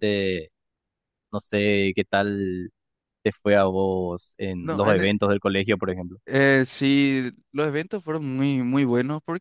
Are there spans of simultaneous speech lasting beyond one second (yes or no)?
no